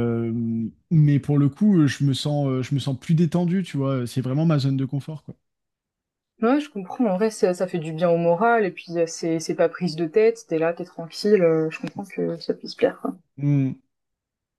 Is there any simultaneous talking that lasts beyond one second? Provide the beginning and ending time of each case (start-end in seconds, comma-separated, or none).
none